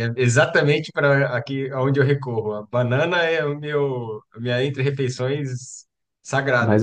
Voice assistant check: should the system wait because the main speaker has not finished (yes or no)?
yes